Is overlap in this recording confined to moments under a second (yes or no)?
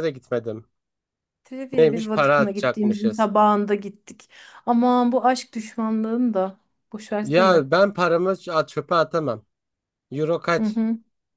no